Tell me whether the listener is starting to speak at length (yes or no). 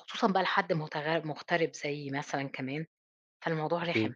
no